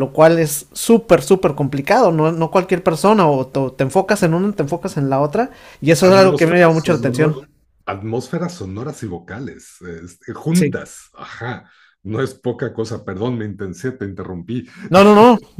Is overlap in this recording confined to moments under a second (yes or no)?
no